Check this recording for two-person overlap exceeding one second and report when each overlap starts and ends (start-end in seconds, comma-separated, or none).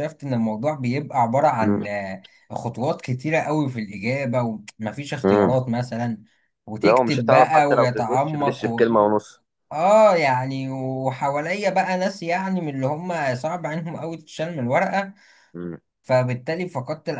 6.8-8.9